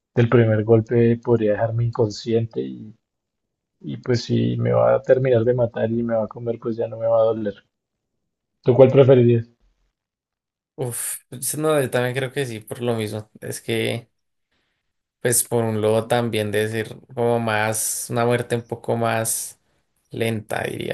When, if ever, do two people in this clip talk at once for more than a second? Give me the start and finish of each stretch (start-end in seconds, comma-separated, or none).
none